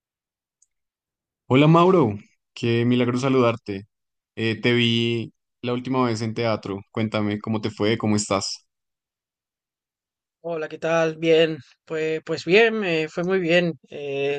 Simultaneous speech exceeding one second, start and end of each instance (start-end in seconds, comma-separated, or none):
none